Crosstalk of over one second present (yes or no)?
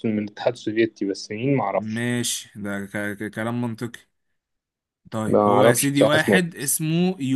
yes